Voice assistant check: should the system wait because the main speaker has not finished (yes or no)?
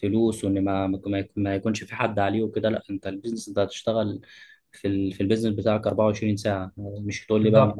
yes